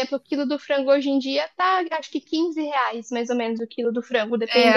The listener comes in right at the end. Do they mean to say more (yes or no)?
yes